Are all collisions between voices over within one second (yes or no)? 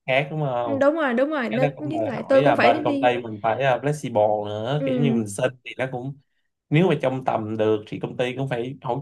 no